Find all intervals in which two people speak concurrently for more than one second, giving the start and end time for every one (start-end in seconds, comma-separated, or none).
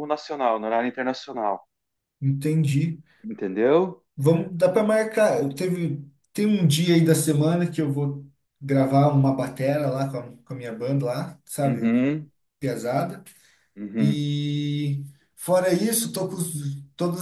none